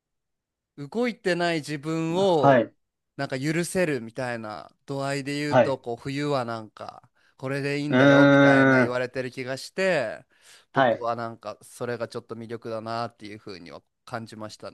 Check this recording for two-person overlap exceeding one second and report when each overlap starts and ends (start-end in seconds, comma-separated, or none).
none